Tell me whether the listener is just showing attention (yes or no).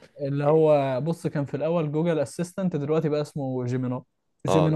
no